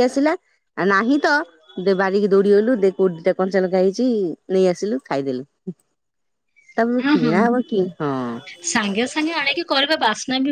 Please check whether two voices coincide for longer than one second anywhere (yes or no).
no